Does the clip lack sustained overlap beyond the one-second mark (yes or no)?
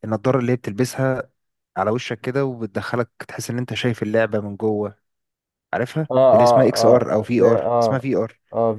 no